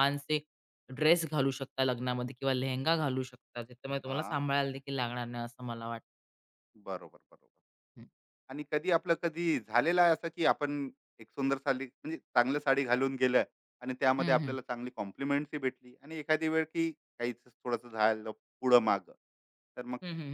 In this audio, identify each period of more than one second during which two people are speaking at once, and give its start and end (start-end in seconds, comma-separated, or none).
none